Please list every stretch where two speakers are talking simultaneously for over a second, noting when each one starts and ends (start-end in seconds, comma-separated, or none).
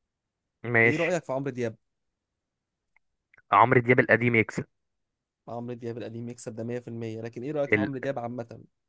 none